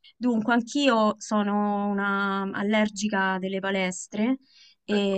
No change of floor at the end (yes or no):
yes